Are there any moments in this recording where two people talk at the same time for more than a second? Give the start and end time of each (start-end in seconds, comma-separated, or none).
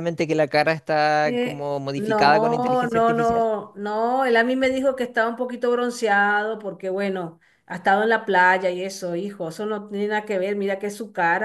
1.2-3.5